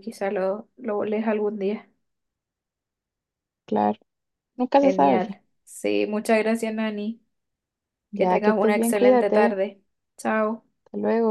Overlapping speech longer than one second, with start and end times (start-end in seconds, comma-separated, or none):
8.1-9.6